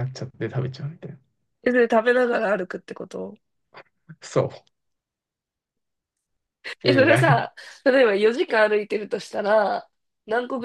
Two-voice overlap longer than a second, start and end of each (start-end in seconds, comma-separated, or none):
none